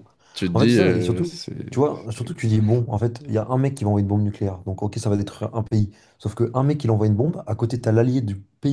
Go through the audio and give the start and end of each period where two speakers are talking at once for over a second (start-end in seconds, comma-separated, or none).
0.5-2.4